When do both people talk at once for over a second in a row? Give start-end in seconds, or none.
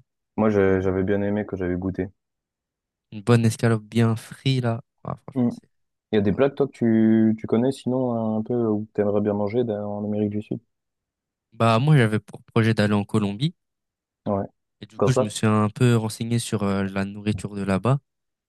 none